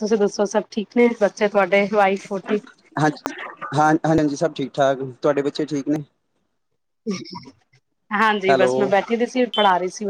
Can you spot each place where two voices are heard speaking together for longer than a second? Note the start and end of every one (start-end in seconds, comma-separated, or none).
none